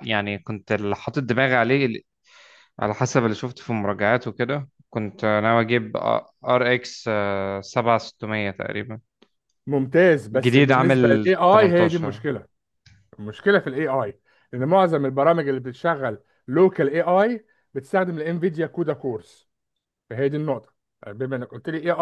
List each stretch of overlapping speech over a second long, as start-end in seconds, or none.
10.4-12.2